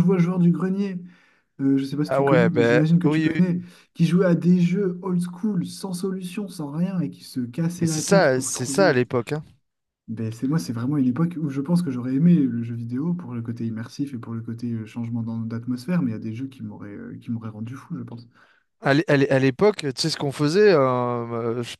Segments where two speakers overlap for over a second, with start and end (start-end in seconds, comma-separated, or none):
2.1-3.6, 7.8-9.0